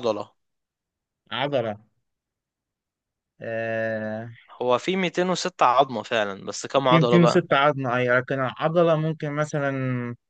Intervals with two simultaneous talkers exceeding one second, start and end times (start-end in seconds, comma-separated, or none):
none